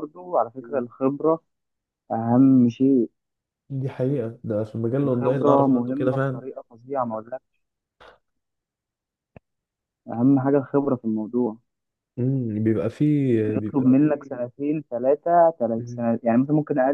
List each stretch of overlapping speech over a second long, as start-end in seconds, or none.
5.0-6.4